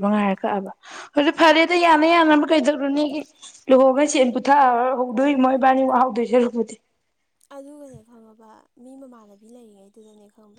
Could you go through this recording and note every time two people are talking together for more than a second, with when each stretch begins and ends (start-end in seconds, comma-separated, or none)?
none